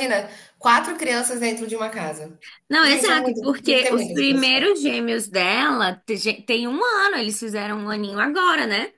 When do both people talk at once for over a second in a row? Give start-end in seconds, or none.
2.8-4.7